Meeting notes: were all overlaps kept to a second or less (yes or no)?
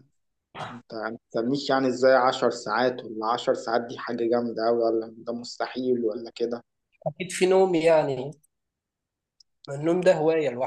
yes